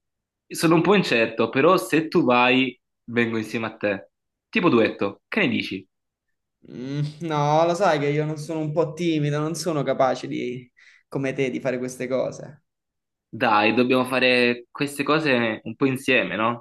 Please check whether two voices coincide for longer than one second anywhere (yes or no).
no